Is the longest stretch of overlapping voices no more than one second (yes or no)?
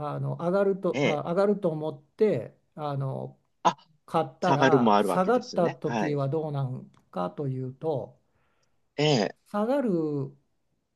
no